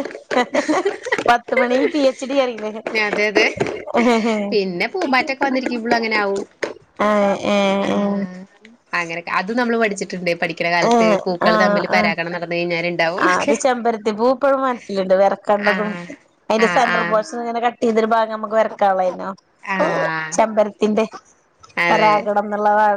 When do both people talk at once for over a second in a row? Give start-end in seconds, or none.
none